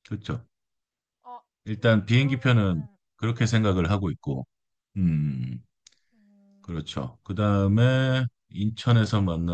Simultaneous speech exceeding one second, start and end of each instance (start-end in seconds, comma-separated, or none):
1.8-3.7